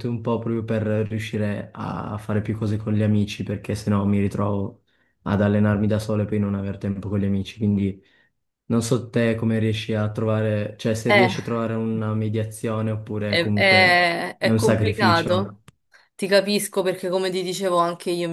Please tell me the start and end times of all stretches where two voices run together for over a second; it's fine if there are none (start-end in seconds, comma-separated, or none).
13.3-15.6